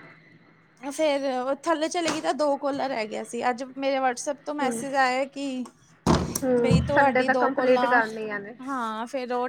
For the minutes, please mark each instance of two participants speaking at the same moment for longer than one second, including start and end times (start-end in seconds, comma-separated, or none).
6.6-8.0